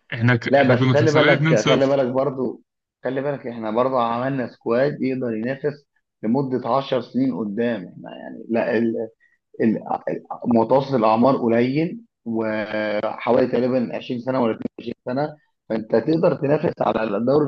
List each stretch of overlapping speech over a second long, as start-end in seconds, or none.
0.5-2.0